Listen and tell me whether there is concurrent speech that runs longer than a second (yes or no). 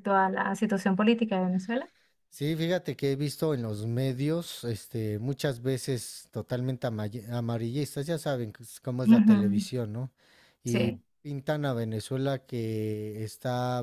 no